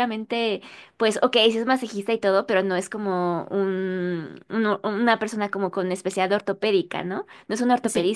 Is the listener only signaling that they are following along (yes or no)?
yes